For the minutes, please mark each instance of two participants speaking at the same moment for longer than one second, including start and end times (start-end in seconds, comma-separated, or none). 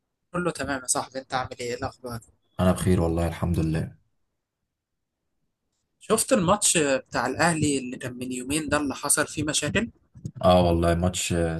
none